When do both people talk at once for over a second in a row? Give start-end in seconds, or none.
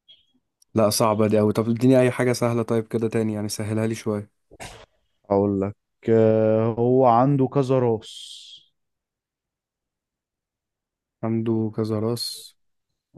none